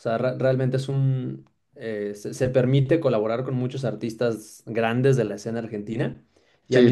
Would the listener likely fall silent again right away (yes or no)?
yes